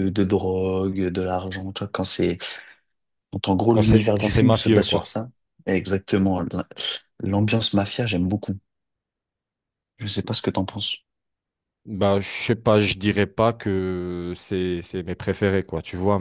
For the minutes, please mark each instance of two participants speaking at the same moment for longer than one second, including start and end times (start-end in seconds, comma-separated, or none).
3.7-5.1